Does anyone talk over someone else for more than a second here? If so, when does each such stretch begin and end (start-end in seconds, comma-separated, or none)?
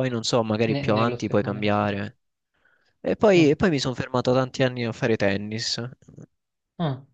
0.7-2.0